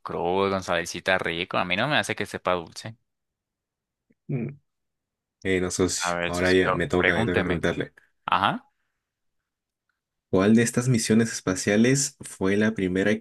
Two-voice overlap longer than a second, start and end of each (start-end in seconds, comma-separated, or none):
6.0-7.6